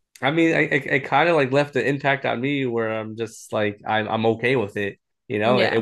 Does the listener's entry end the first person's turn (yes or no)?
no